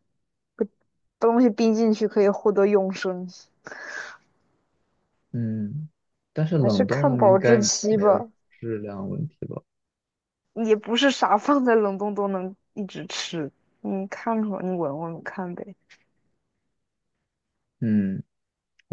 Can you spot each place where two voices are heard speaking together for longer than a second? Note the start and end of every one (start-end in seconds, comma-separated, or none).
6.6-8.3